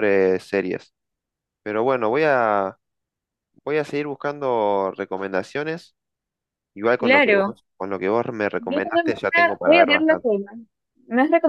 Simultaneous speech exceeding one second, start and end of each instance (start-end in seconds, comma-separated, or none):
8.6-10.3